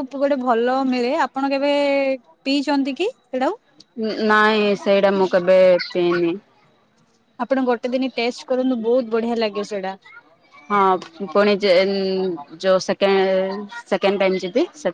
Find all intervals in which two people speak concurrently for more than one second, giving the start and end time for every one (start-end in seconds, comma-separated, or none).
none